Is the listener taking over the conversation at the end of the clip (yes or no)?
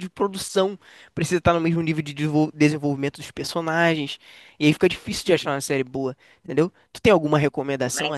yes